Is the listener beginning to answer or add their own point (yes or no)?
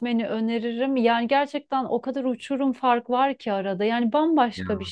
no